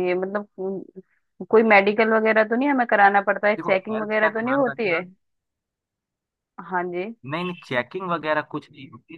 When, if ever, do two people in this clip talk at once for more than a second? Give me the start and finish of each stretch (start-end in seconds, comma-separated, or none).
3.6-5.0